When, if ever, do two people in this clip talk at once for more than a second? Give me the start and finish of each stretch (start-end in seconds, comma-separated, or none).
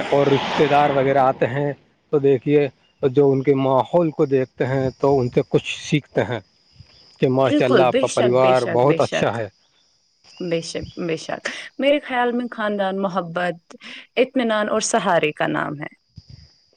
7.5-9.3